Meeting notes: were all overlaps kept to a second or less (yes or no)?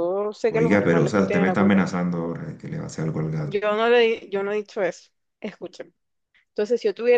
no